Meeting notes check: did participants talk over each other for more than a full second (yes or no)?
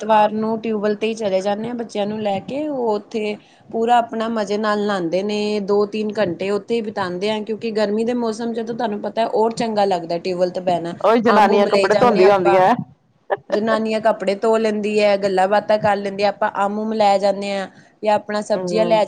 yes